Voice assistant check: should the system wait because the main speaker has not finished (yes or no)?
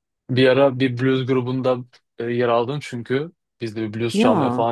yes